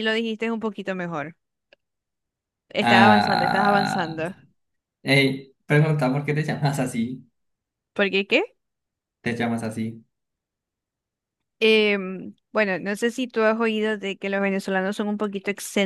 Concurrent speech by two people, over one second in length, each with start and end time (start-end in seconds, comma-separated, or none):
2.8-4.2